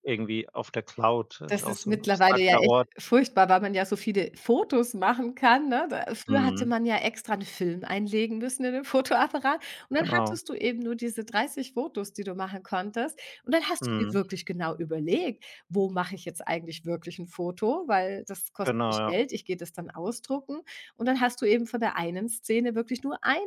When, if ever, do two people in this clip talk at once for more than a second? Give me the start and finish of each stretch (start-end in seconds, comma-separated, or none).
1.5-2.9